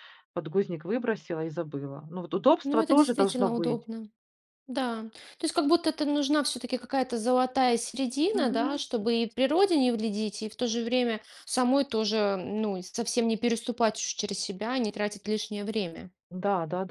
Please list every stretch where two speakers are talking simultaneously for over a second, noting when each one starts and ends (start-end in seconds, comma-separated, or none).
2.6-3.9